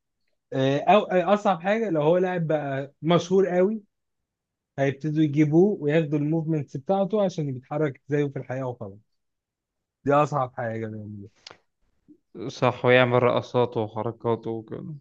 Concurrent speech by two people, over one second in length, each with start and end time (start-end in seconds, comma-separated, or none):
none